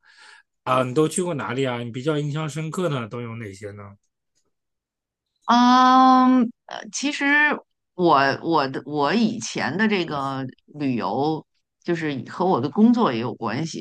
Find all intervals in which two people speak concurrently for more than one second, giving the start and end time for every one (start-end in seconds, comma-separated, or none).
none